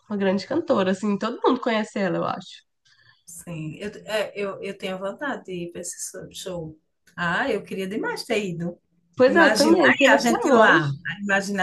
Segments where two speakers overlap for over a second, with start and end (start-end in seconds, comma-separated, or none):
9.3-10.8